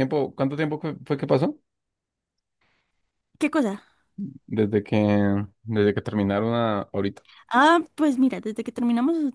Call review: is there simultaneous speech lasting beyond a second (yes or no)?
no